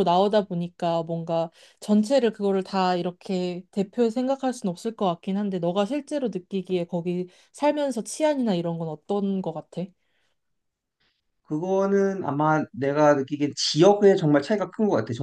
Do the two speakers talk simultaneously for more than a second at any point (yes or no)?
no